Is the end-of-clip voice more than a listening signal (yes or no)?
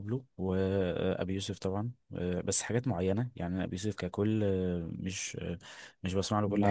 yes